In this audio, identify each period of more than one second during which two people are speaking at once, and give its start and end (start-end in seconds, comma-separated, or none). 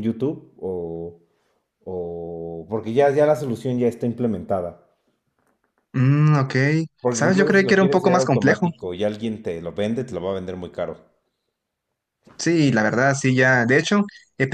7.1-8.7